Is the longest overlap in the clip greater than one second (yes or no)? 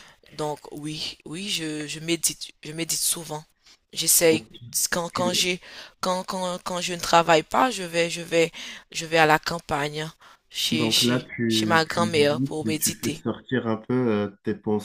yes